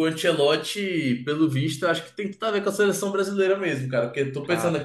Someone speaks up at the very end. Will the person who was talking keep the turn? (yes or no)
yes